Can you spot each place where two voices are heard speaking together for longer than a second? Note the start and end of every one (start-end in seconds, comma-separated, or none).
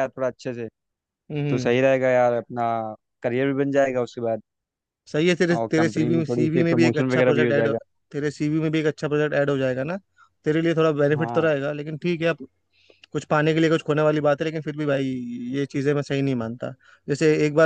5.6-7.7